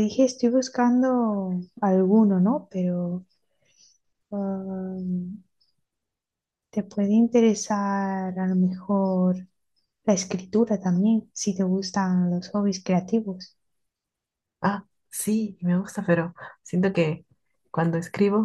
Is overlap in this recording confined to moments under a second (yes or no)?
yes